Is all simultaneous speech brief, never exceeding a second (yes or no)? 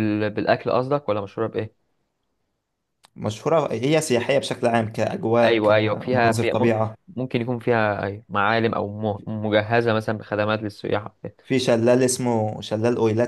no